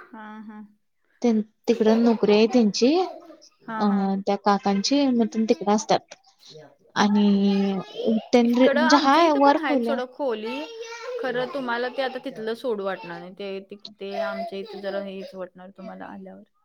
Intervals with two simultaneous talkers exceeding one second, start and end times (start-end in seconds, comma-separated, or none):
8.4-10.0